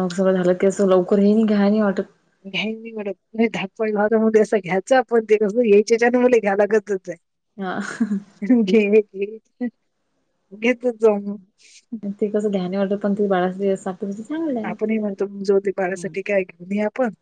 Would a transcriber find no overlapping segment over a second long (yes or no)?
yes